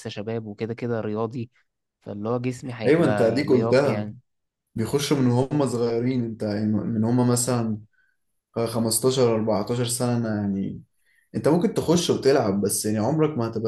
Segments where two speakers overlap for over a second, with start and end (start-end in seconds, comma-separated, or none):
2.9-4.1